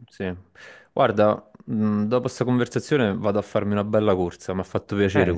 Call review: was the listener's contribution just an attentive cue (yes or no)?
no